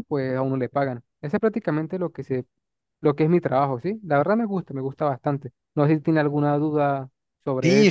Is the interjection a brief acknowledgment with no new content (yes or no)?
no